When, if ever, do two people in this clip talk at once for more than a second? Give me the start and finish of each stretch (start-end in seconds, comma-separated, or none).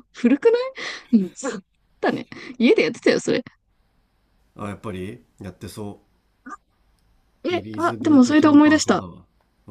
7.5-9.1